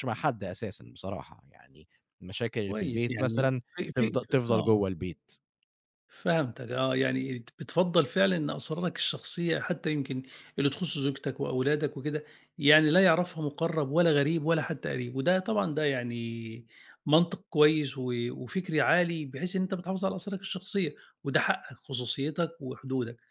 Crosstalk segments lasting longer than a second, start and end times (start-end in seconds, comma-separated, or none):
2.7-4.7